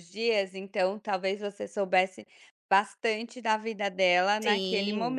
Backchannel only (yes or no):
no